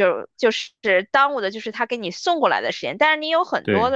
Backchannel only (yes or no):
yes